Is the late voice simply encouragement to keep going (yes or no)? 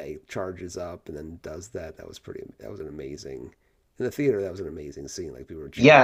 no